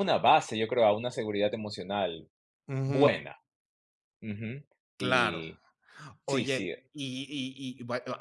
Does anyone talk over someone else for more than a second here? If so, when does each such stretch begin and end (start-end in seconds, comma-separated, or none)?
none